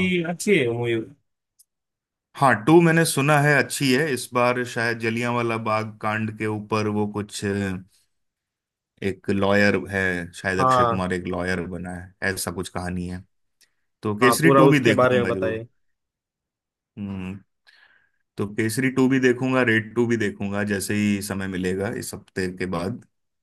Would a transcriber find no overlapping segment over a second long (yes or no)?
no